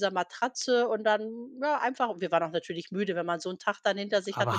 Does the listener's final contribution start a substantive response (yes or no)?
yes